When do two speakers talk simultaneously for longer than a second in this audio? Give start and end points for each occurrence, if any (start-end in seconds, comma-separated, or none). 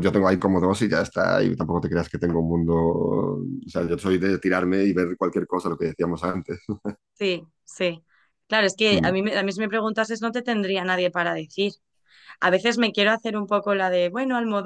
none